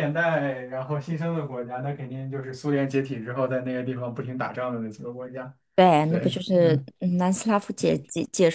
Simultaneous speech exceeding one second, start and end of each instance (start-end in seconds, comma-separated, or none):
none